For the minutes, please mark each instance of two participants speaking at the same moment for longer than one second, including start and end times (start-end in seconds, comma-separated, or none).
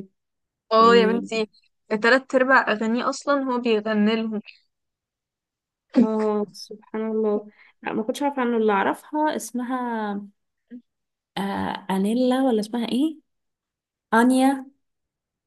none